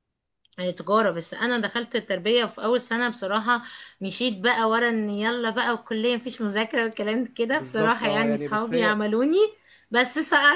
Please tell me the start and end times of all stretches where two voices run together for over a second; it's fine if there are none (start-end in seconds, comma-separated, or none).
7.5-9.0